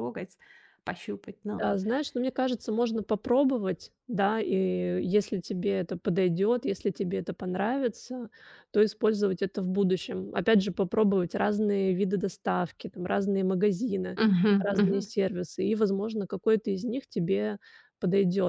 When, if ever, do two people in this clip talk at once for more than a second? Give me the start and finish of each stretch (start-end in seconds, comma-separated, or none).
none